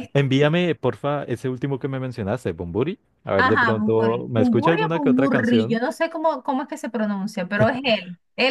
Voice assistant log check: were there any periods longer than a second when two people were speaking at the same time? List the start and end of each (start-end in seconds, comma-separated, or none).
3.4-5.8